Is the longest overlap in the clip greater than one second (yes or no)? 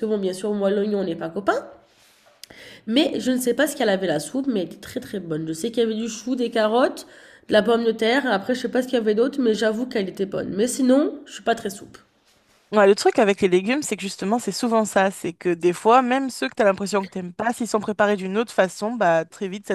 no